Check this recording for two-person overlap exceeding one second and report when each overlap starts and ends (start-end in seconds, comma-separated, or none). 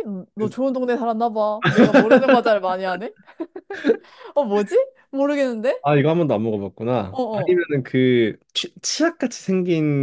none